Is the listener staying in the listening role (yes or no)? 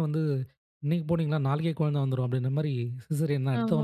no